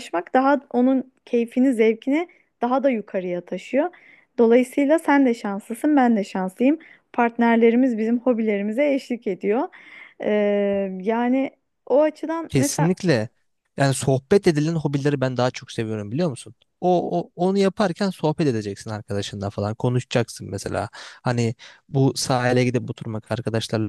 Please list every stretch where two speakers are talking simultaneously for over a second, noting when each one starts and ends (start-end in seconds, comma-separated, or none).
none